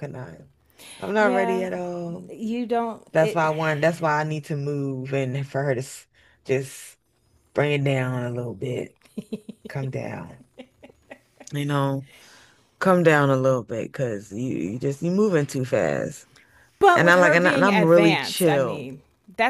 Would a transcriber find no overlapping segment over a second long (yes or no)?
no